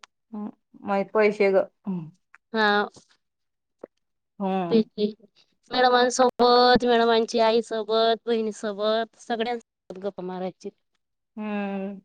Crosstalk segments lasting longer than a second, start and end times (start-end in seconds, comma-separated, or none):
none